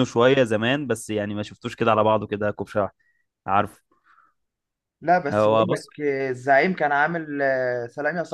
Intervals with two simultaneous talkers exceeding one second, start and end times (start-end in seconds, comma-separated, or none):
none